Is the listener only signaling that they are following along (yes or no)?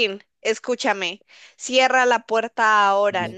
no